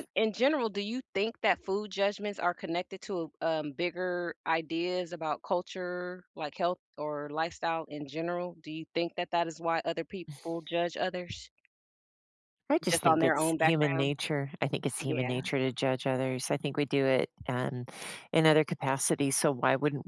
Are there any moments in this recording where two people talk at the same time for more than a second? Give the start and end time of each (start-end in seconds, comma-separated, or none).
12.9-14.1